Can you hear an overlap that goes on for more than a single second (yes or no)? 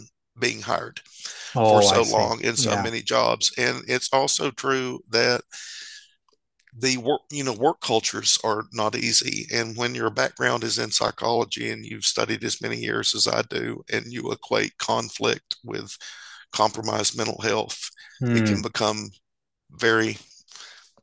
yes